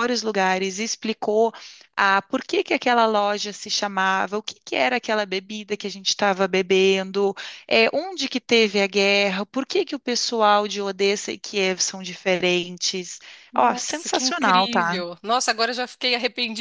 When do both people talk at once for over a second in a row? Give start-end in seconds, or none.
13.6-15.0